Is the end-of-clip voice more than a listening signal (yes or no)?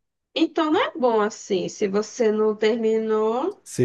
yes